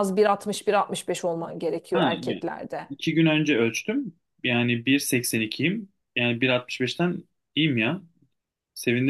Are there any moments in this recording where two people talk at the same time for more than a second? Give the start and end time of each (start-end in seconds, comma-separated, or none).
none